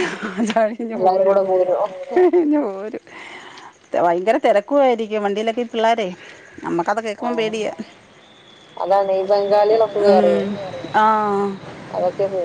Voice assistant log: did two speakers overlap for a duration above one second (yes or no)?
no